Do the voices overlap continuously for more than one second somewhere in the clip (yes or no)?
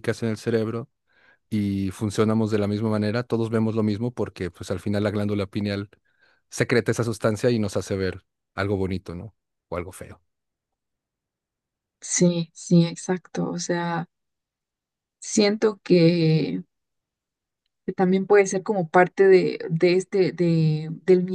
no